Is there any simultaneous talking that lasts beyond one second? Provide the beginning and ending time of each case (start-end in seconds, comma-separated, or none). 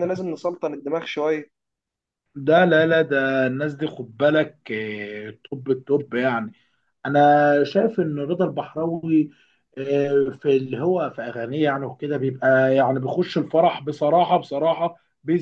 none